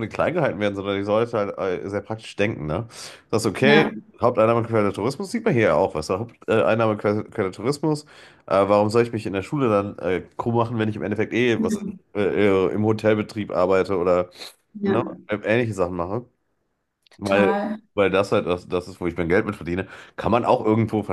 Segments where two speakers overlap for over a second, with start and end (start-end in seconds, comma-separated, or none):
none